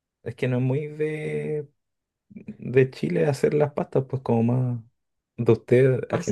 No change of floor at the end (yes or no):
yes